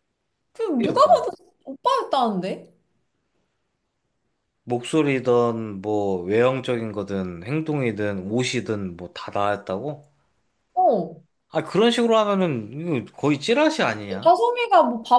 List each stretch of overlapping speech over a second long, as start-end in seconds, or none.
none